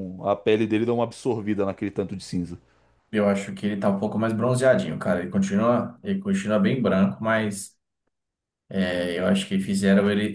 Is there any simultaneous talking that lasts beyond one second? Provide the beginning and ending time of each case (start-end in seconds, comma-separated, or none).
none